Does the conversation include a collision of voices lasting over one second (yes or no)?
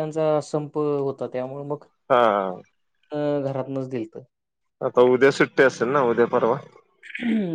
no